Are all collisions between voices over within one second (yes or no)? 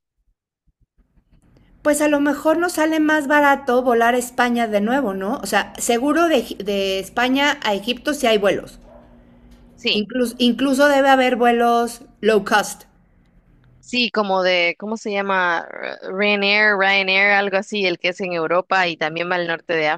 yes